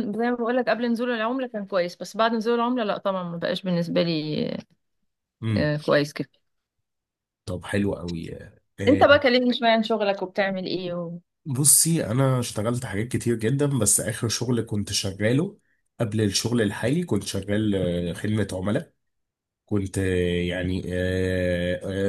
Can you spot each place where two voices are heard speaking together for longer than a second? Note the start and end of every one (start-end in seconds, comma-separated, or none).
none